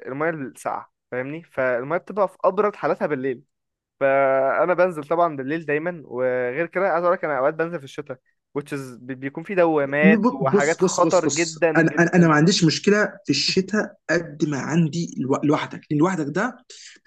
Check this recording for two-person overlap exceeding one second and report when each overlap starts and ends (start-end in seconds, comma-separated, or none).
10.0-12.3